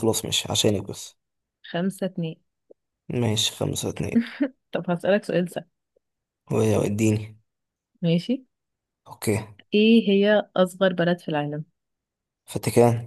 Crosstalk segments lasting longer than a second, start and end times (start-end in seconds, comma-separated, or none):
none